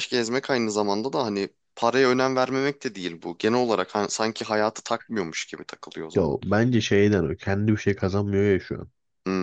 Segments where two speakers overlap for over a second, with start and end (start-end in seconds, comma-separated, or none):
none